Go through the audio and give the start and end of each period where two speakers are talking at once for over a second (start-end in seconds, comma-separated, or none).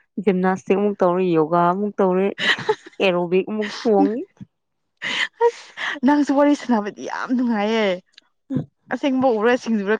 none